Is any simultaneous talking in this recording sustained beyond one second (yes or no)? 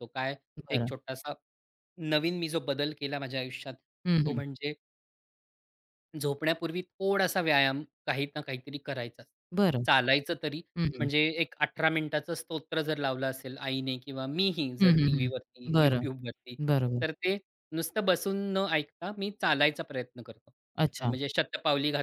yes